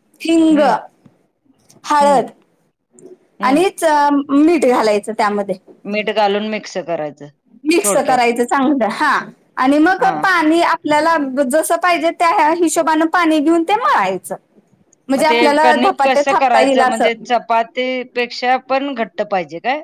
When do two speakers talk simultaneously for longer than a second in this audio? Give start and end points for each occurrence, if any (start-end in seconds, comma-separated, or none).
15.2-17.2